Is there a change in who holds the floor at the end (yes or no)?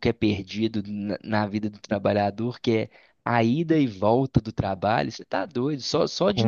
no